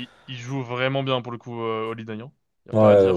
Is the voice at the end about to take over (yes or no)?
yes